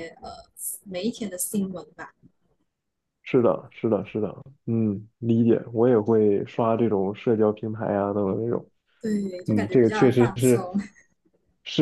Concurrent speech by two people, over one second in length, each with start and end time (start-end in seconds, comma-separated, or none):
9.4-10.7